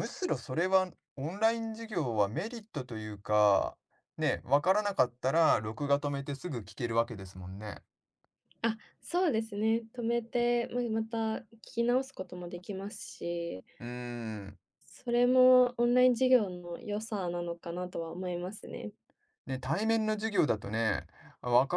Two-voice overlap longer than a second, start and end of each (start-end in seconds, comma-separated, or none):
none